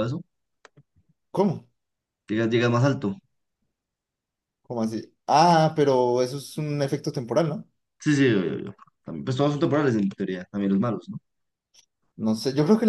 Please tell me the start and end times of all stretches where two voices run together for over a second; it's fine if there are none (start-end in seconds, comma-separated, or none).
none